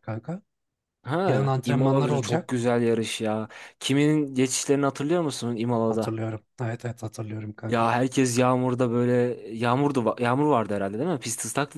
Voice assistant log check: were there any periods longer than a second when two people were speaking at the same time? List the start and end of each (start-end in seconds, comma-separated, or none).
1.2-2.6